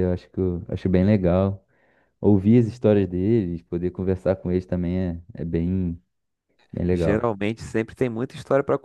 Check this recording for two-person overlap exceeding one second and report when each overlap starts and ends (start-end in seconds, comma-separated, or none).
none